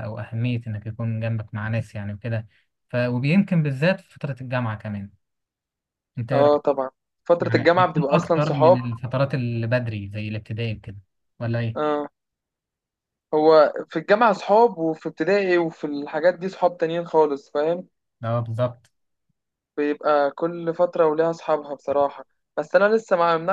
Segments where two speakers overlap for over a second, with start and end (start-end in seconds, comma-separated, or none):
7.4-8.8